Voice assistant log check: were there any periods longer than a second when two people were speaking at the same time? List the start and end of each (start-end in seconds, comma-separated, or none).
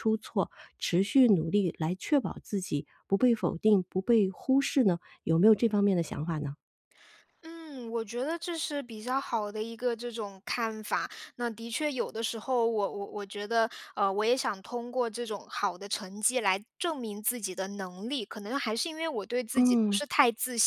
none